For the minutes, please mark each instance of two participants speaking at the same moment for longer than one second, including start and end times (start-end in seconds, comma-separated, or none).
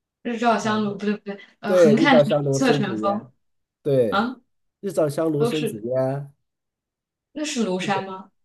1.6-3.3